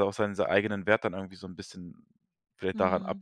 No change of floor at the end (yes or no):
no